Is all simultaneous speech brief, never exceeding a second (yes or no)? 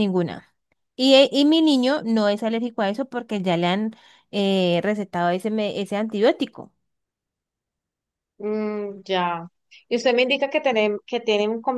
yes